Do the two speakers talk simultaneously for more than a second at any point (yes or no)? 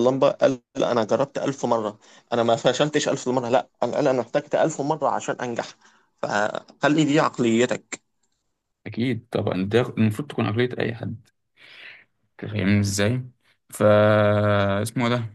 no